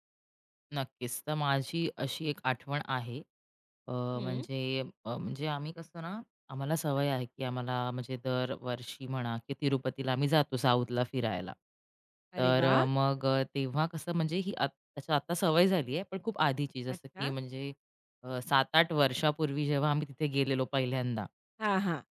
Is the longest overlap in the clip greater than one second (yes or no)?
no